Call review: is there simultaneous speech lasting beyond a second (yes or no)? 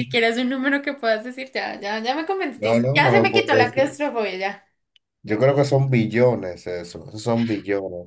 yes